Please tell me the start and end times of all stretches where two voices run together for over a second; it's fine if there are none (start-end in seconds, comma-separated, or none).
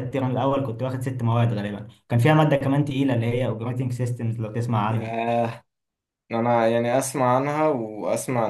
none